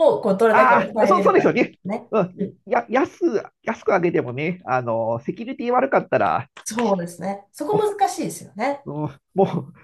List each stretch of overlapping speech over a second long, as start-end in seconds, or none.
0.5-2.5